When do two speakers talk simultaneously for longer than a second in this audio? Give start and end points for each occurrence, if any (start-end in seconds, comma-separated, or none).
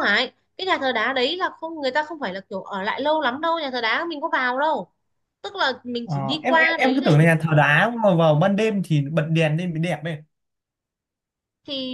6.0-7.3